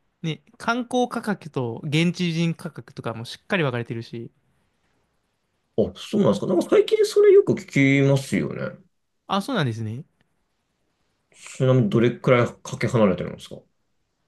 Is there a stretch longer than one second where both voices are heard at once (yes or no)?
no